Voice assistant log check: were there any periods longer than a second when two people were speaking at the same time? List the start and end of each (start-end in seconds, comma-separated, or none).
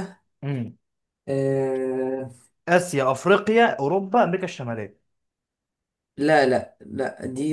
none